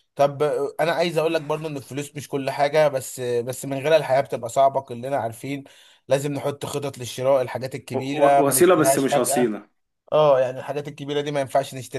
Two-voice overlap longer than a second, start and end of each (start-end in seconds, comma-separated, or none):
7.9-9.6